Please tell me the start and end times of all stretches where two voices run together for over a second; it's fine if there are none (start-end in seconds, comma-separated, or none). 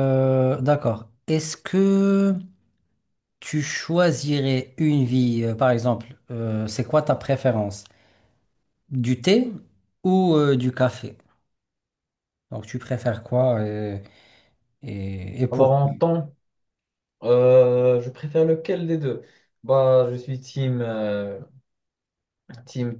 none